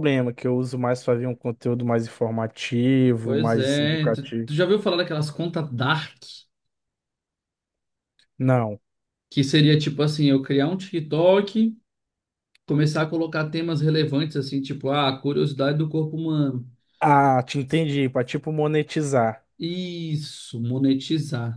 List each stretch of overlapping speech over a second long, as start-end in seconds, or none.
3.2-4.5